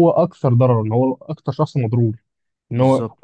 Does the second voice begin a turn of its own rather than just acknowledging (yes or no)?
no